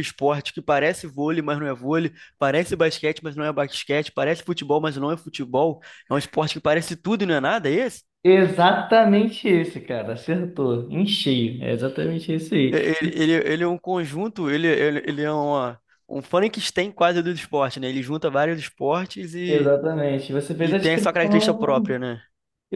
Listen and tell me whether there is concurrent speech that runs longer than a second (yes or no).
yes